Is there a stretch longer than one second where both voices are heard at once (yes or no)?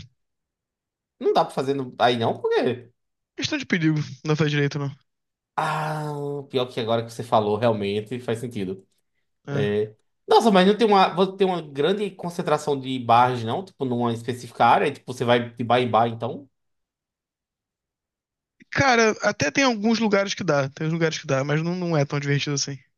no